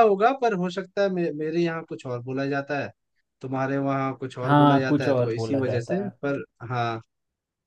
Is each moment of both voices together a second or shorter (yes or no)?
no